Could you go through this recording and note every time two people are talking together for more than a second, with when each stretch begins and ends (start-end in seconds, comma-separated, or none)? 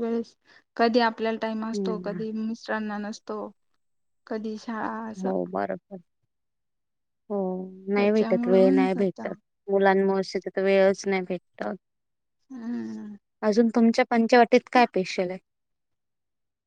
8.0-9.2